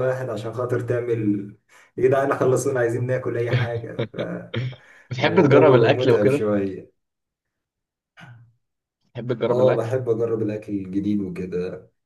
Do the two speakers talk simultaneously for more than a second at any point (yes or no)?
yes